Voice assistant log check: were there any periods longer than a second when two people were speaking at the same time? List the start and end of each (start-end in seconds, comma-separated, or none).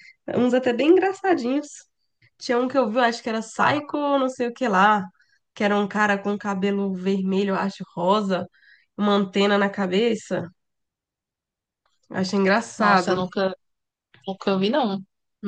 none